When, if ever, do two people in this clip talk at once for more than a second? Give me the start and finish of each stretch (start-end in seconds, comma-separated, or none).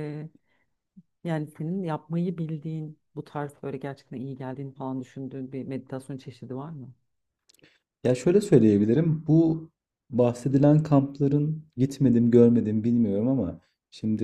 none